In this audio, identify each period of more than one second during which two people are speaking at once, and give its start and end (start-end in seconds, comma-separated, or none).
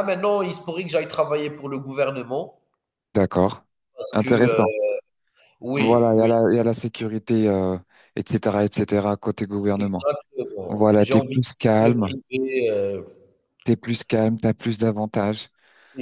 10.7-12.1